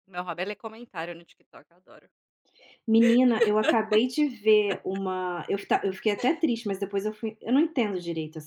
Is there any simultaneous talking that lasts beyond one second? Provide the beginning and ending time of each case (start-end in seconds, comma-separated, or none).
none